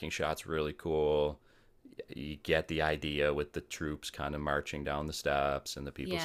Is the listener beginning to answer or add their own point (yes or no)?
yes